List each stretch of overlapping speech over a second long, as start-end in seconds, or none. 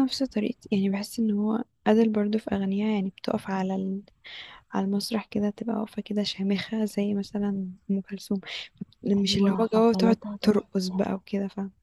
9.2-11.1